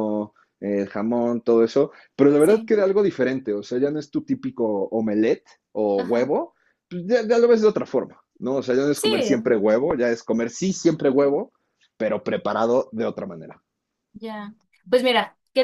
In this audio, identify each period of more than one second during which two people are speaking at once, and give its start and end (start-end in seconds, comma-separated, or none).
none